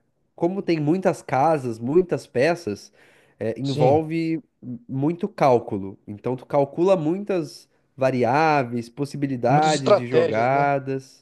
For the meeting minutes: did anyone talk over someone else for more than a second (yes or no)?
yes